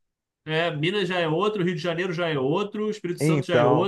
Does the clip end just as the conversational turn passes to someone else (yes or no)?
no